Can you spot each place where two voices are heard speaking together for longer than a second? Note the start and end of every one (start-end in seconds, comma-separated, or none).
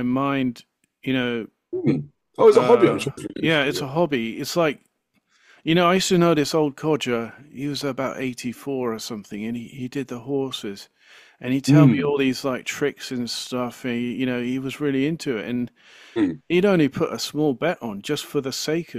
2.5-4.0